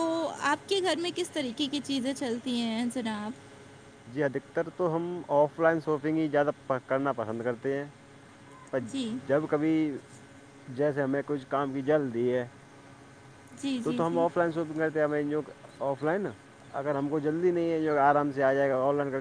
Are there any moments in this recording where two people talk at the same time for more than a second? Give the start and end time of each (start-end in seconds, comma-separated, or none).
none